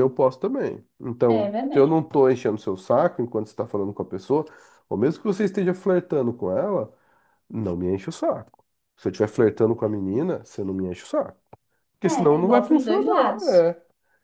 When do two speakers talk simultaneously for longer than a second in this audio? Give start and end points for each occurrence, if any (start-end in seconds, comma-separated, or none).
12.0-13.7